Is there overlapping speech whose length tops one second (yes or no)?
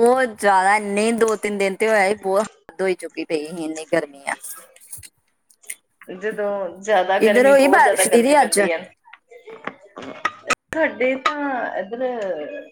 yes